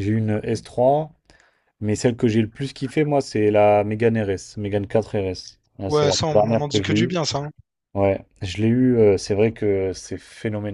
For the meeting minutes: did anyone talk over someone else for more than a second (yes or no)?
yes